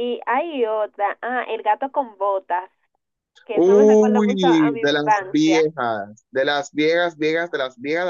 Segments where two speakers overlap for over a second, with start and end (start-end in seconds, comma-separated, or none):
3.5-5.6